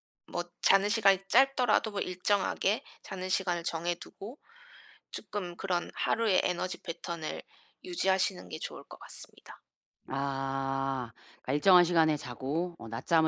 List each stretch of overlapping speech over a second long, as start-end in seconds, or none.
none